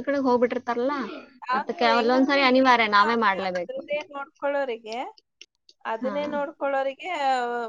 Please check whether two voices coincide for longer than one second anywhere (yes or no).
yes